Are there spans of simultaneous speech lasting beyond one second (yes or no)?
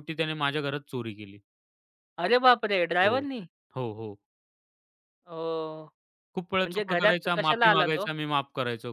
yes